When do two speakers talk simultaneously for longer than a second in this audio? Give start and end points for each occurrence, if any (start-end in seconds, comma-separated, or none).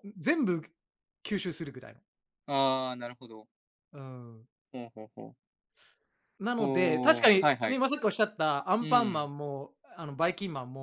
6.6-7.8